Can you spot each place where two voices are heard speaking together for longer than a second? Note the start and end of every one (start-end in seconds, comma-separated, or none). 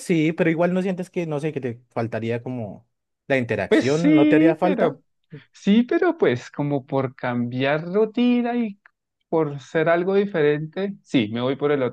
3.7-5.0